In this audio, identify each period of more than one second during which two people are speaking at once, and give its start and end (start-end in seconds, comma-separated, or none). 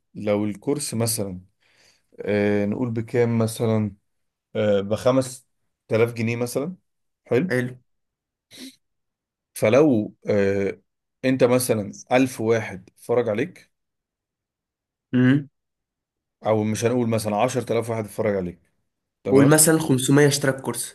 none